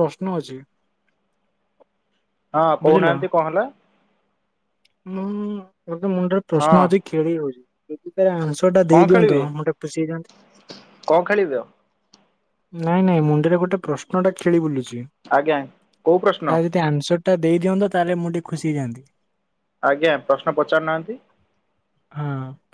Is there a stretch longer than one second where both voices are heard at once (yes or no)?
no